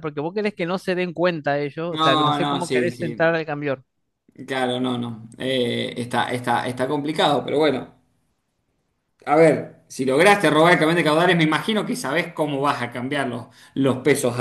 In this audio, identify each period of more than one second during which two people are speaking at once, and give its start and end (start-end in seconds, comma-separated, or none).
1.9-3.3